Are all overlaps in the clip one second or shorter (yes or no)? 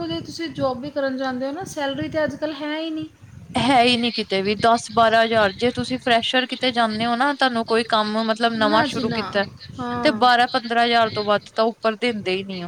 yes